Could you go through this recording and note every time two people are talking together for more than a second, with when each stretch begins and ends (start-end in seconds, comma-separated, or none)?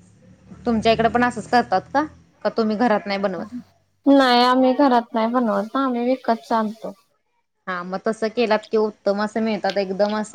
none